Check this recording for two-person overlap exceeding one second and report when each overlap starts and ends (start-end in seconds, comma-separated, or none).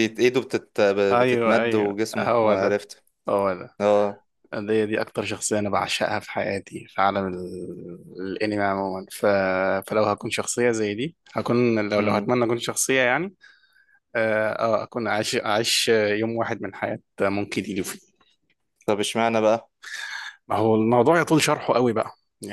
1.2-2.8